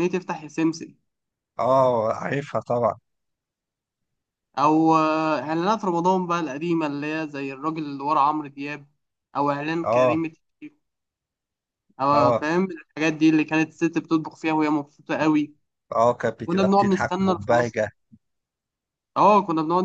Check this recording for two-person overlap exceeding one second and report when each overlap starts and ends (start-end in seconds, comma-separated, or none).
16.4-17.8